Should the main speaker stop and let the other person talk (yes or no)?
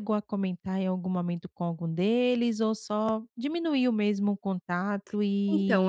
yes